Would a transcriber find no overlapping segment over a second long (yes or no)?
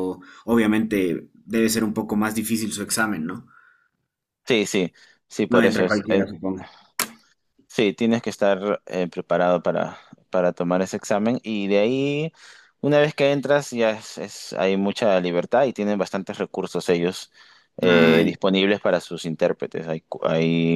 yes